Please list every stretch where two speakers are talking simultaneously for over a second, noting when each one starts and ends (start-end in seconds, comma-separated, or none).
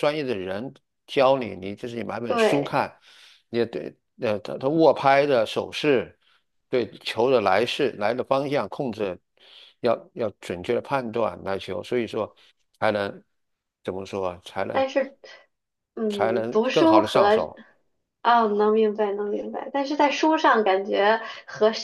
16.1-17.5